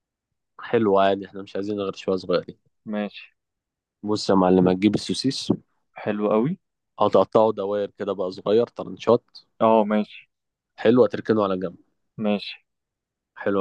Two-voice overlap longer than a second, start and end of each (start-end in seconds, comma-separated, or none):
none